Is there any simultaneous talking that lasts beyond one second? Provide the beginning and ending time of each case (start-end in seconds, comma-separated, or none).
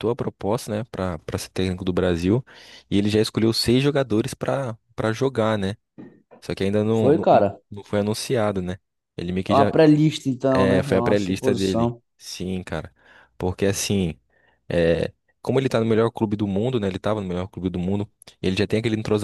10.5-12.0